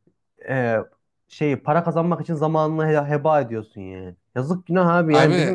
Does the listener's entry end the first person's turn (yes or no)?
no